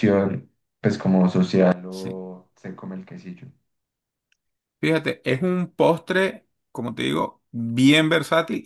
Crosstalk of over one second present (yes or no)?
no